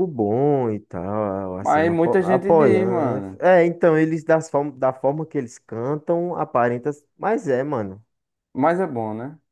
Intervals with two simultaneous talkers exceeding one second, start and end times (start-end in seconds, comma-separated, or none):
1.6-3.4